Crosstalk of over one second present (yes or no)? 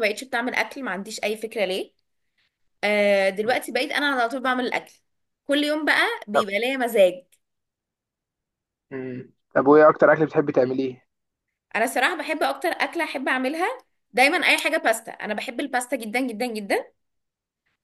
no